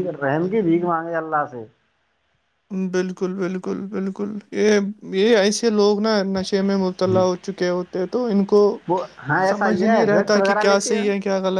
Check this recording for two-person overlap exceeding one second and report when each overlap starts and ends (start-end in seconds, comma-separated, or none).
9.5-10.9